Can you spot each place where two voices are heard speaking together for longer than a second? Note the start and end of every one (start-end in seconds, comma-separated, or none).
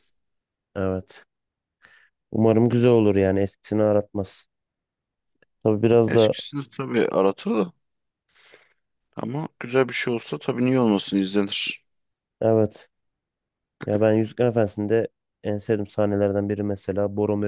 none